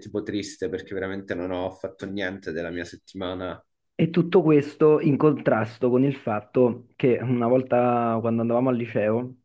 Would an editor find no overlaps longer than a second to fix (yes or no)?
yes